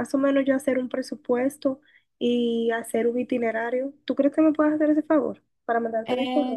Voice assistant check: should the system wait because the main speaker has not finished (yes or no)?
no